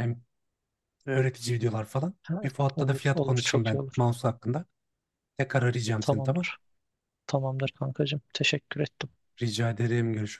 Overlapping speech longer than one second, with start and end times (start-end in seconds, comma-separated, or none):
2.3-4.1